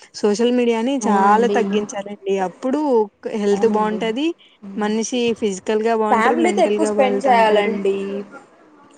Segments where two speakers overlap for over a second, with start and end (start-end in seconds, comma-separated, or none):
6.1-7.7